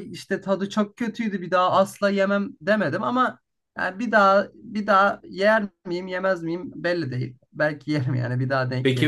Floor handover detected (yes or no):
yes